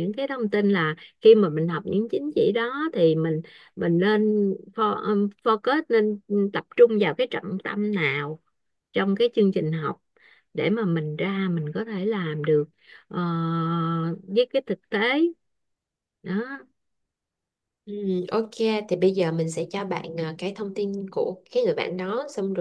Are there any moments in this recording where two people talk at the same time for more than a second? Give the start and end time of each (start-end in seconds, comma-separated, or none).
none